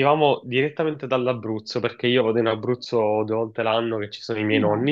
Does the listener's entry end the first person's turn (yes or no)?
no